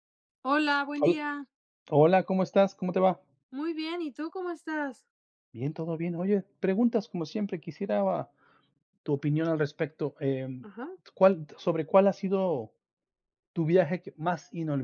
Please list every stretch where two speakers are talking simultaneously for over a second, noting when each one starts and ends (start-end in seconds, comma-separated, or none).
none